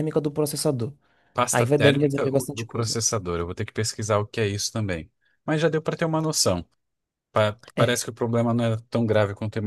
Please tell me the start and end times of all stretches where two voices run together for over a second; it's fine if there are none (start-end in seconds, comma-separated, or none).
1.5-2.9